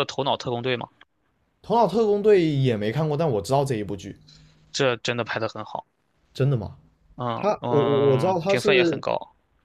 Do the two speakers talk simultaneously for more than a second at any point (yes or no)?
yes